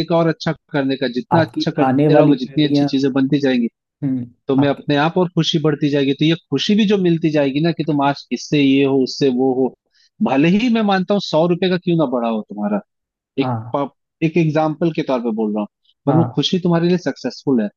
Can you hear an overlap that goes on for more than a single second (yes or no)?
yes